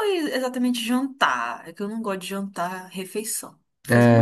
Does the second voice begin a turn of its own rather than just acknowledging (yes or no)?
yes